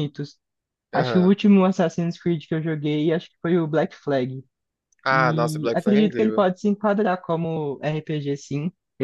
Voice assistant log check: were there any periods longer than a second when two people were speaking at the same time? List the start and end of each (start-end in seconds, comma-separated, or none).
5.1-6.5